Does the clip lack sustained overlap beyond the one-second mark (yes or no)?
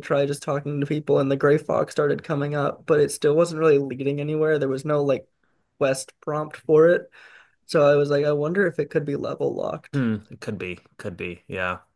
yes